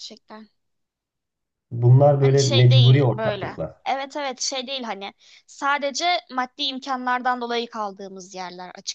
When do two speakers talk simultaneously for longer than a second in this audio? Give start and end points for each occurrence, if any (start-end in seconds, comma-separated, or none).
2.2-3.8